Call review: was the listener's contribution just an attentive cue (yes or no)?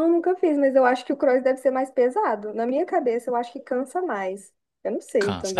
no